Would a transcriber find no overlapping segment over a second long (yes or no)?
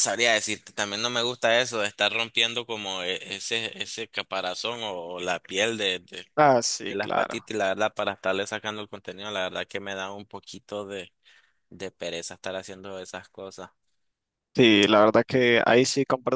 yes